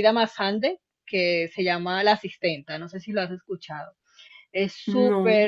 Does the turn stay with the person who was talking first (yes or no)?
yes